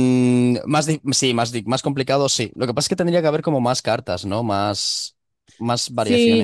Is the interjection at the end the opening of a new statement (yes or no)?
yes